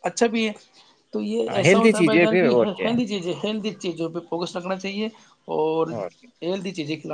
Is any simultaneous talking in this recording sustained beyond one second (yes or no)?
yes